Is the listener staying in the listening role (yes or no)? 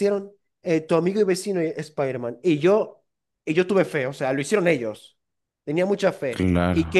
yes